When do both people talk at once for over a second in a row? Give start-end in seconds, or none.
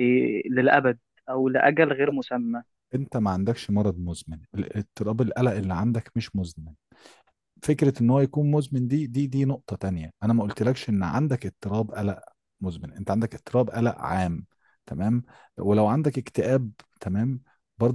none